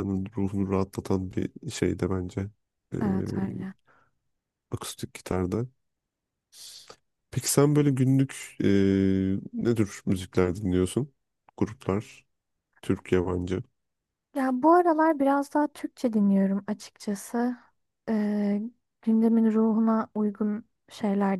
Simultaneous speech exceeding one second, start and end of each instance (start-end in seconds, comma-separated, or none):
none